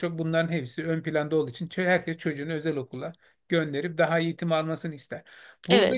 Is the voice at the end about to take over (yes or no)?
no